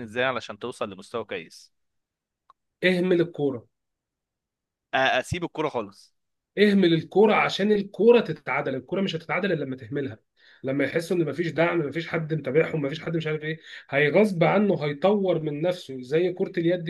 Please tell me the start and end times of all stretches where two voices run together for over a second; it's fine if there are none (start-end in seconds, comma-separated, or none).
none